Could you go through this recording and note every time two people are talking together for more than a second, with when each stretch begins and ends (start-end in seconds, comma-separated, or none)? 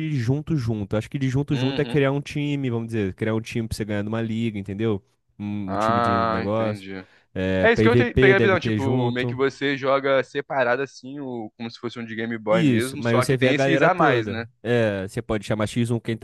5.7-6.8, 7.6-9.4, 12.5-14.4